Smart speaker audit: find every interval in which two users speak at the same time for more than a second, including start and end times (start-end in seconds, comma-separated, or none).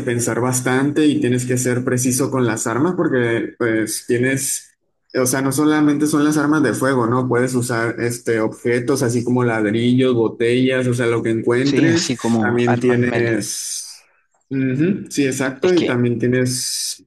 11.6-13.3